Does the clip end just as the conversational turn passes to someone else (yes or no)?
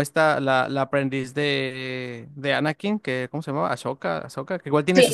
no